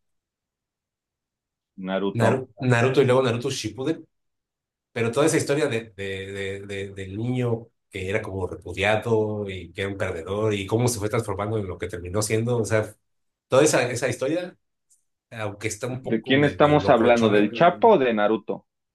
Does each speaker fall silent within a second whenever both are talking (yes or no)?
no